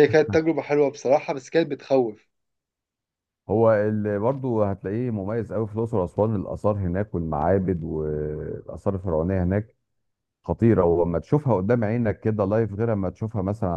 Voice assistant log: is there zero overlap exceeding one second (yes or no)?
yes